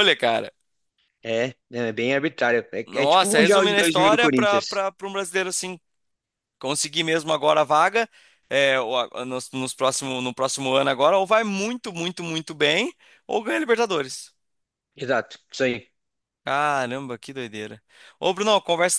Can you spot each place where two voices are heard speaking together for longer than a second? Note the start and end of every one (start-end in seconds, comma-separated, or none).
2.9-4.8